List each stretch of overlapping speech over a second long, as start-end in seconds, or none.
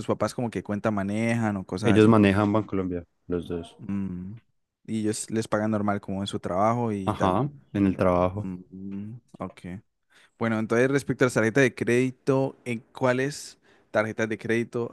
none